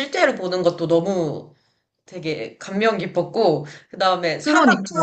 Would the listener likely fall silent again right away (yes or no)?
yes